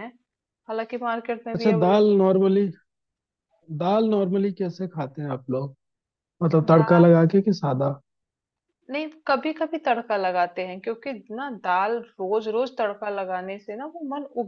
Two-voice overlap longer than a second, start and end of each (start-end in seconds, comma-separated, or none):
none